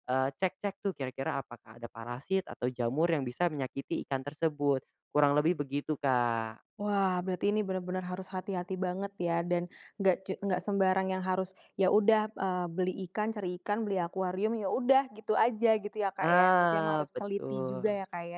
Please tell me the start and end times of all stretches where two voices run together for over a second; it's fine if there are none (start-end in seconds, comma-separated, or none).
16.2-17.7